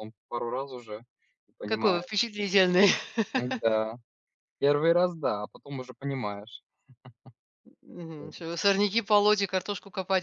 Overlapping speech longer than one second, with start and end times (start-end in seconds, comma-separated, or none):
none